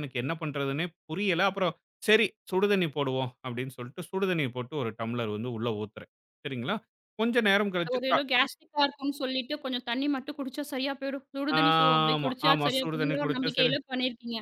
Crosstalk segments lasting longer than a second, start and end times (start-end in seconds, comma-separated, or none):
11.6-13.7